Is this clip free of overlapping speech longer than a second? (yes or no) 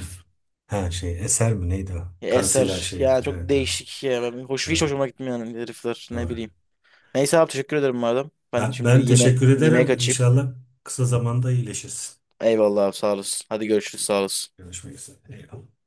no